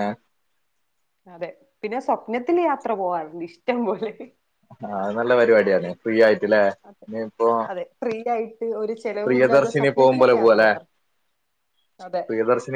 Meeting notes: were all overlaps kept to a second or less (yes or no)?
no